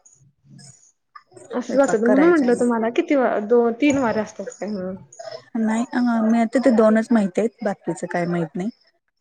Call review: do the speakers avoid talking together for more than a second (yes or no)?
no